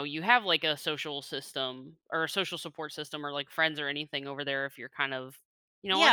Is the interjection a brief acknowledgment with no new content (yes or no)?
no